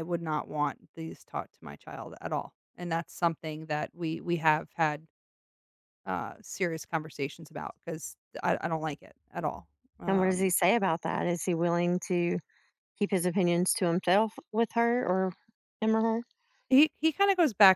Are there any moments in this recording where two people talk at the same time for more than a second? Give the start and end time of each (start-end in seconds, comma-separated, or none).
none